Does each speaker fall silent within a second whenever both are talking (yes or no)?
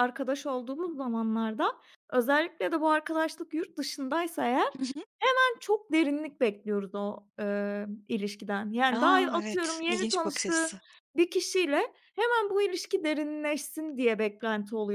no